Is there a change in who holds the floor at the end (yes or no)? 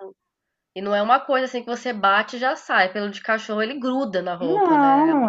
yes